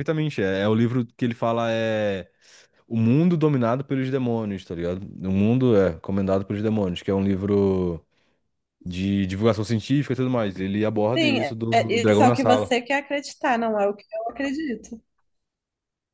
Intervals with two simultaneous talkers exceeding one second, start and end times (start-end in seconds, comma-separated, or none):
11.2-12.7